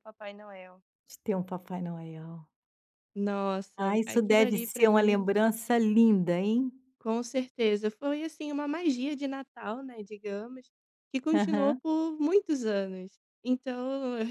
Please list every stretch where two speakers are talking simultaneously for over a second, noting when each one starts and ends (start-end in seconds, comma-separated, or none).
3.8-5.3